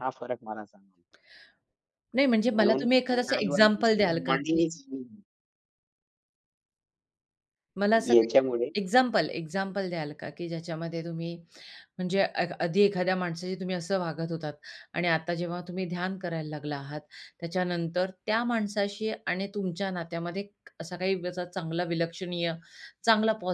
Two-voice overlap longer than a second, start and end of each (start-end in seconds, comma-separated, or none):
2.5-4.6